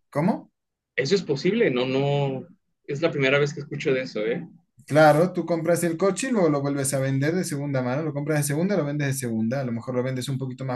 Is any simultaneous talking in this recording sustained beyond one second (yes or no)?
no